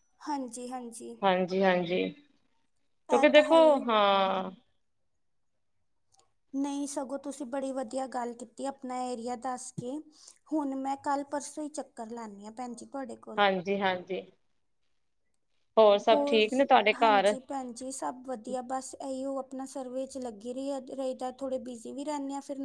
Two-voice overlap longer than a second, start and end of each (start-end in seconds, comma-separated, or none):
none